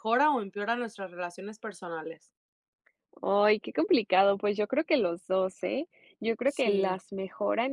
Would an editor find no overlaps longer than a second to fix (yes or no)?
yes